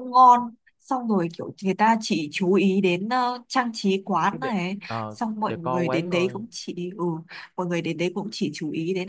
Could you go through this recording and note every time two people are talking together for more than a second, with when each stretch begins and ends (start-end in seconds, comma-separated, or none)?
4.3-6.4